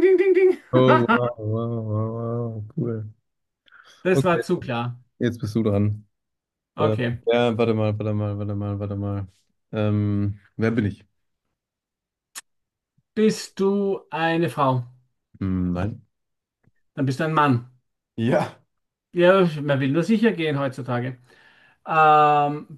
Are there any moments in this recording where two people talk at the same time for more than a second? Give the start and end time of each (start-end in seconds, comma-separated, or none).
none